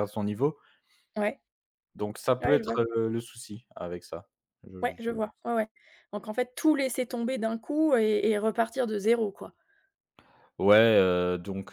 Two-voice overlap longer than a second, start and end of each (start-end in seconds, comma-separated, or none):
none